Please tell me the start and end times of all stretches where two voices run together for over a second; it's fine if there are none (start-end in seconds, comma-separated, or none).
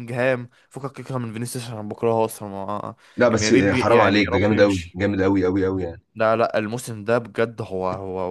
3.2-5.0